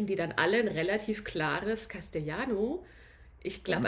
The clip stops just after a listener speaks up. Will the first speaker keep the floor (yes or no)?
yes